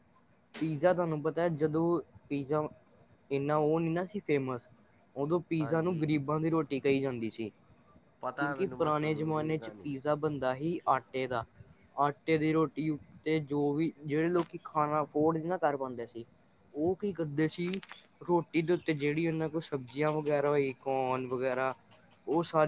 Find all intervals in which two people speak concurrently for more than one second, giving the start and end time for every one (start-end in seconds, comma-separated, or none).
8.4-9.9